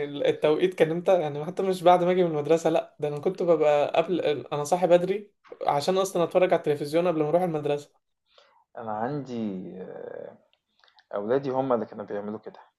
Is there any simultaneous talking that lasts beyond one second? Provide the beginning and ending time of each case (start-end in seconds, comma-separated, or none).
none